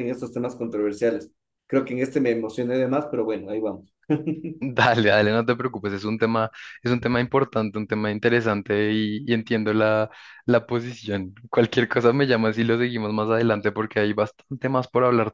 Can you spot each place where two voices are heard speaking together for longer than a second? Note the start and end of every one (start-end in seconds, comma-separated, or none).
none